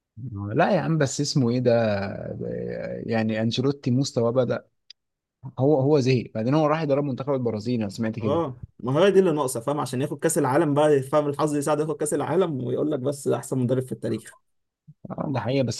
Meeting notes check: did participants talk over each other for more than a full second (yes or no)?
no